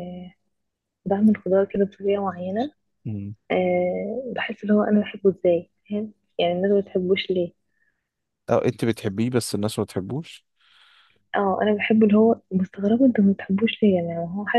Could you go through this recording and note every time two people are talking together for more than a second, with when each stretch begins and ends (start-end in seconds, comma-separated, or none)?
none